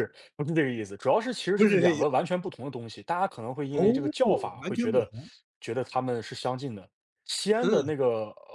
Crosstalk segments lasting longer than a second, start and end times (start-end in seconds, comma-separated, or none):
none